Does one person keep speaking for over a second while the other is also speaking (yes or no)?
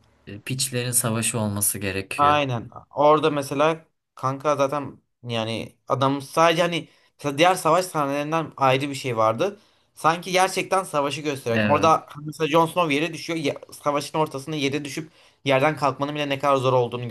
no